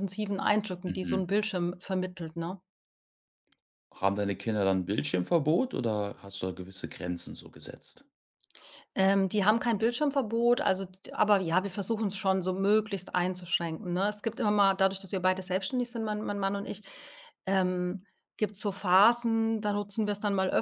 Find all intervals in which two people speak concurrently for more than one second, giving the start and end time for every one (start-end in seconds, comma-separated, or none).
none